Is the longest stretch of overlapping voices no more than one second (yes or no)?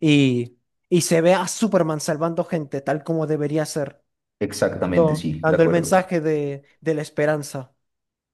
no